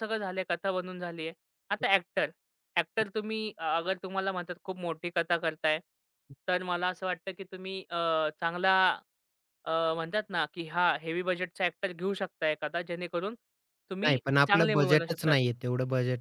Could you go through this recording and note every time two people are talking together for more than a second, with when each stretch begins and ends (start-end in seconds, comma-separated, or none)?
14.0-15.4